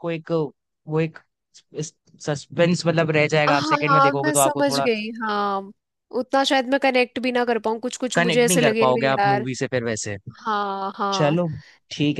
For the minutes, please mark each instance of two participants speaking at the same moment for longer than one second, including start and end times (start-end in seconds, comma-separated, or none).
3.5-4.9, 8.2-9.5